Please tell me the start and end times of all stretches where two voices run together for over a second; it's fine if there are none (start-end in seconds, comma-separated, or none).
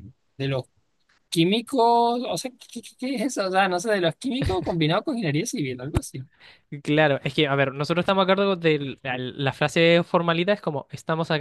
none